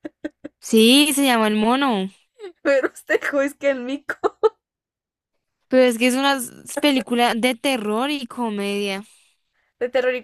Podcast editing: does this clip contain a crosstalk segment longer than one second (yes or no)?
no